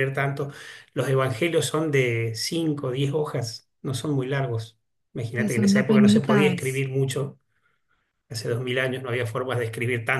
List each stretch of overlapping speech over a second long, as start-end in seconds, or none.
5.3-6.8